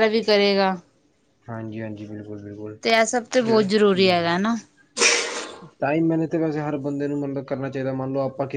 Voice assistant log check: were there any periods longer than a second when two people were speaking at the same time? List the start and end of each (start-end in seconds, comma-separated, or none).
none